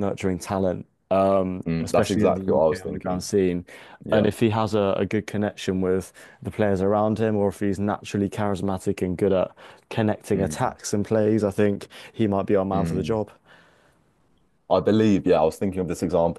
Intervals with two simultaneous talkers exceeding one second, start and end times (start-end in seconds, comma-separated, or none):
1.7-3.3